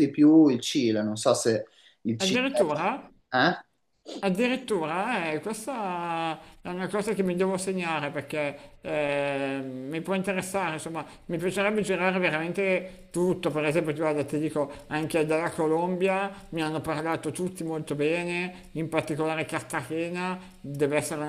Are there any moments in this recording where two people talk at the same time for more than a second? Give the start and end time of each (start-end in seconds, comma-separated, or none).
none